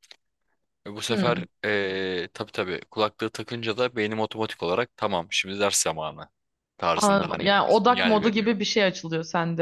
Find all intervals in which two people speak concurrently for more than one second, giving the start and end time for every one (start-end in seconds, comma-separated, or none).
7.0-8.5